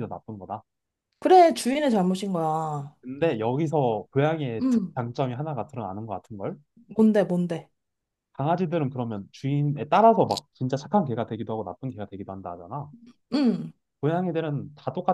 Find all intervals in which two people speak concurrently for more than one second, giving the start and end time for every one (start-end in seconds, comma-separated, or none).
none